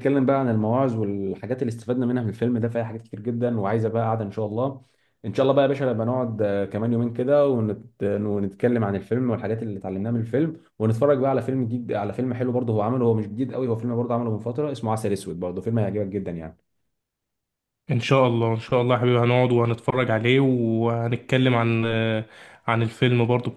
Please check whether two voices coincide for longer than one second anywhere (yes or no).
no